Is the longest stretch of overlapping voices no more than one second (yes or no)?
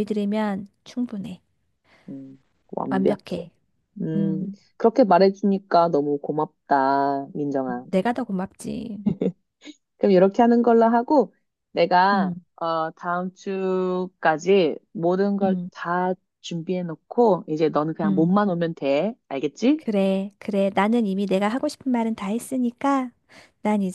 yes